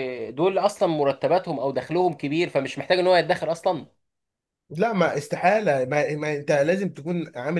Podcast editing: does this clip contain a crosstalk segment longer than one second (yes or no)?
no